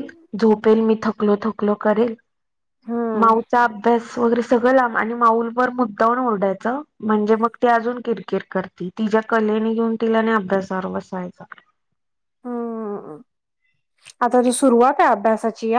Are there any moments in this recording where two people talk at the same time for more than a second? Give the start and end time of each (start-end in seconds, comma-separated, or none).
none